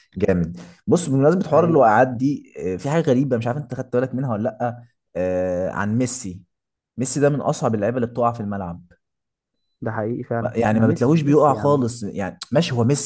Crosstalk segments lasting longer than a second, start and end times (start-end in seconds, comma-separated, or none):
10.4-11.8